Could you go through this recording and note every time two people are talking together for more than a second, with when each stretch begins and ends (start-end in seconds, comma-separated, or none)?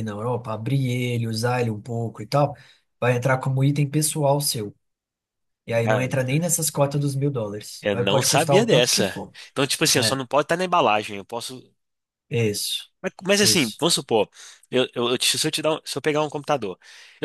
7.8-9.3